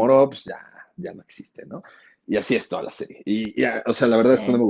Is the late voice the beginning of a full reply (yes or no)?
no